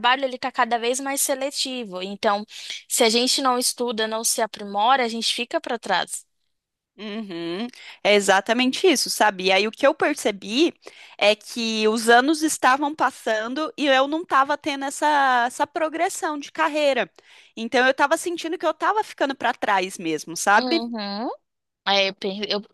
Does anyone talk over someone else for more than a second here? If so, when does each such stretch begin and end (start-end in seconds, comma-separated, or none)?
none